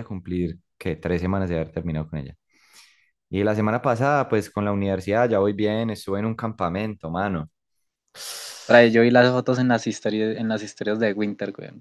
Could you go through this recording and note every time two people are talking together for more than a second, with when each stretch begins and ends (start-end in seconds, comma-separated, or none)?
none